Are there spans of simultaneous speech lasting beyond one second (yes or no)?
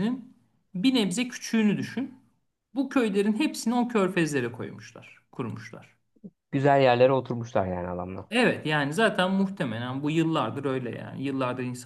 no